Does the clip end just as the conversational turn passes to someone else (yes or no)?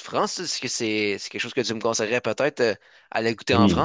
yes